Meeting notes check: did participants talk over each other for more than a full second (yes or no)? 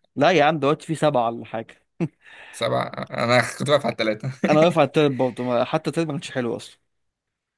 no